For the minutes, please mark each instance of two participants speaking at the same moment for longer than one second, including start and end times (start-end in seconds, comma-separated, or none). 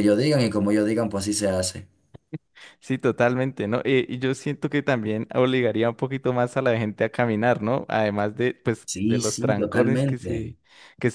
8.9-10.5